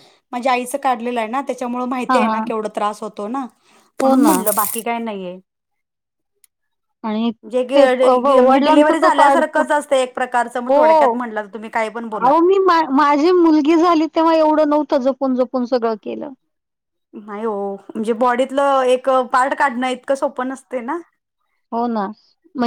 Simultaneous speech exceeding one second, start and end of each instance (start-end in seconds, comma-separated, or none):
7.8-9.6